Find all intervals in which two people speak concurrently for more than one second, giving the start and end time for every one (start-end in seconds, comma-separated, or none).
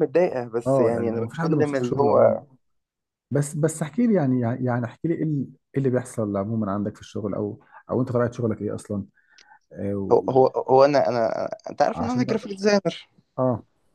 0.7-2.4